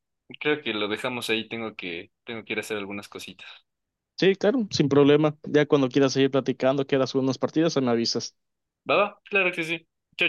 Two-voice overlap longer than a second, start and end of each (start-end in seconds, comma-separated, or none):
none